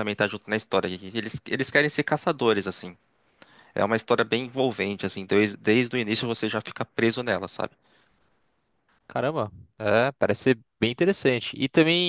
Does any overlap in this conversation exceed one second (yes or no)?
no